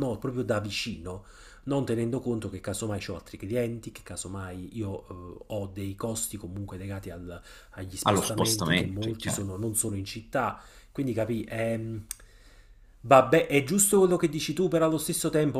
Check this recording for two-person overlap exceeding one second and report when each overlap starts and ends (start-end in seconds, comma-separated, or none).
8.0-9.5